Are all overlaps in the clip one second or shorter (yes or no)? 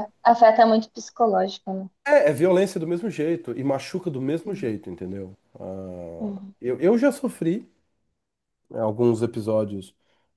yes